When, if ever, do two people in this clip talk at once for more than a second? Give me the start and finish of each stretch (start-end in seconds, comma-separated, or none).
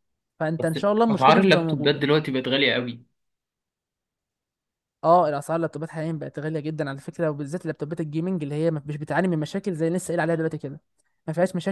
0.6-2.1